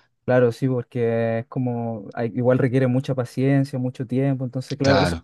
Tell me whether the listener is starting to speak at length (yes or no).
no